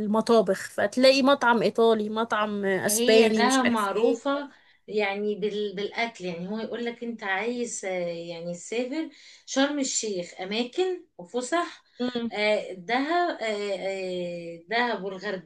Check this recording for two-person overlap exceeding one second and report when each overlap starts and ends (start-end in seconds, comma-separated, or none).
2.9-4.2